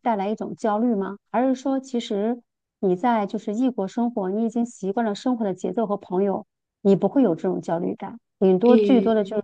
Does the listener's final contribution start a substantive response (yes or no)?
no